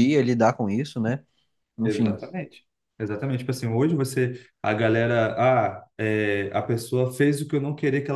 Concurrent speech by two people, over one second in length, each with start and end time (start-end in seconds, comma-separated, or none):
none